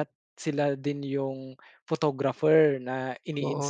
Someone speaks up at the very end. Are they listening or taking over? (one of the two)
taking over